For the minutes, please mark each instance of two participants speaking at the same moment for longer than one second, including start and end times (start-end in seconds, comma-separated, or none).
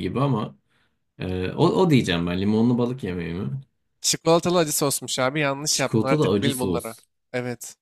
5.7-7.0